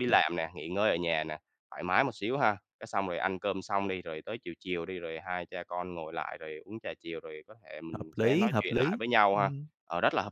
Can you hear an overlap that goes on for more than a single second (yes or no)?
yes